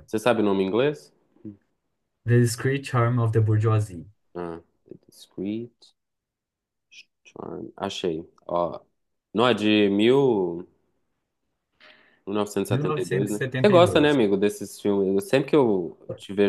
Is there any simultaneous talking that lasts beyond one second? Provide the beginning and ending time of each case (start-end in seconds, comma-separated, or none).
12.7-14.2